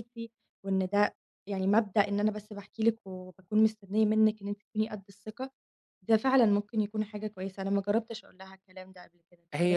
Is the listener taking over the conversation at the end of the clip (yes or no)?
yes